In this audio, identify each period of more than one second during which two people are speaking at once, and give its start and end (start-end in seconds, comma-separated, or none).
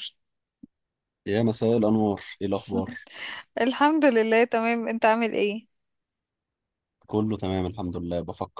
none